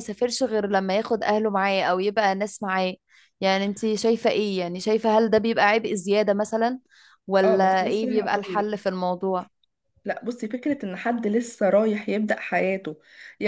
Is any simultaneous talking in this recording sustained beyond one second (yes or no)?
yes